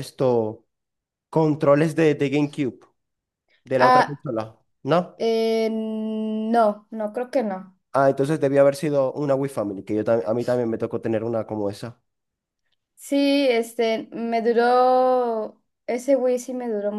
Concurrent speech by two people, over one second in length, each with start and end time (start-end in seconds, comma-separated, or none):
none